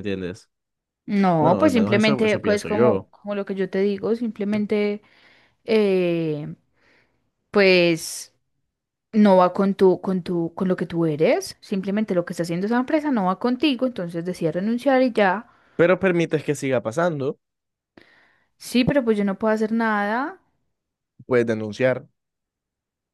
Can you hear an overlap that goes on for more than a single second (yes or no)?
yes